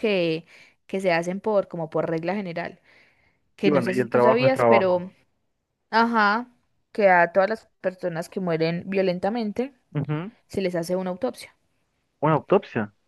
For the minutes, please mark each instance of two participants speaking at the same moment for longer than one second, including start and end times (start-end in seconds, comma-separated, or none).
3.6-5.0